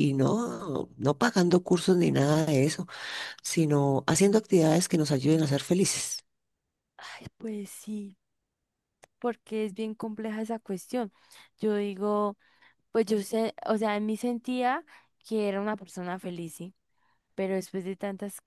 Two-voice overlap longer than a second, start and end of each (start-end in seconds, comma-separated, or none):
none